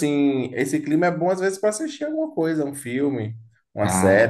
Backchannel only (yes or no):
no